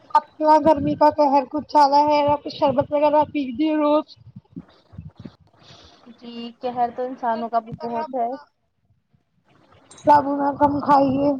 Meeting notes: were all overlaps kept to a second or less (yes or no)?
yes